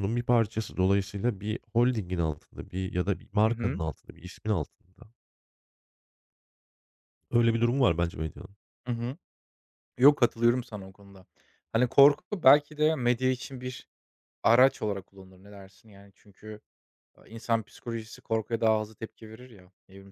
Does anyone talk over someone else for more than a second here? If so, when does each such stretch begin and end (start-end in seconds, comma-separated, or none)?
none